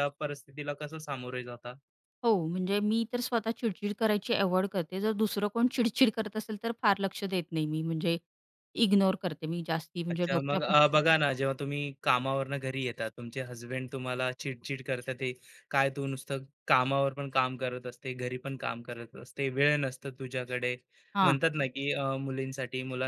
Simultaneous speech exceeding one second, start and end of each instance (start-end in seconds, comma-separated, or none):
none